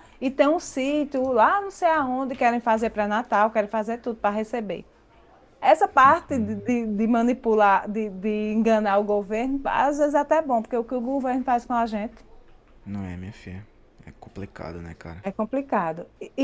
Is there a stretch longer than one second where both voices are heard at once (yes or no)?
no